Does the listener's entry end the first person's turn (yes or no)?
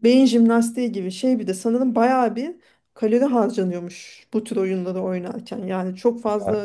no